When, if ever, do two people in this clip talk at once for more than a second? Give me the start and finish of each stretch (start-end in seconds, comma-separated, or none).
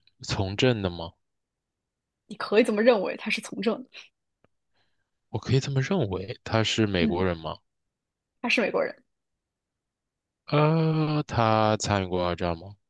none